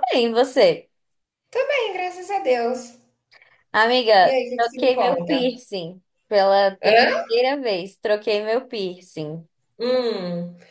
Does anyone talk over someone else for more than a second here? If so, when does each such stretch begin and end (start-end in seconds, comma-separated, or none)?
4.2-5.6